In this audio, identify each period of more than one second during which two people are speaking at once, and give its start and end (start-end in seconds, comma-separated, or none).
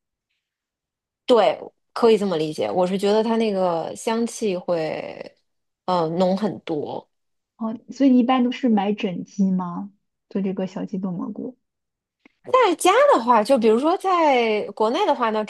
none